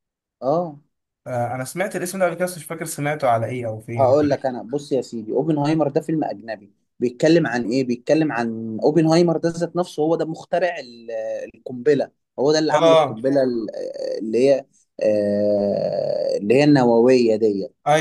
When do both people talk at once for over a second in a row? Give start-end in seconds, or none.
none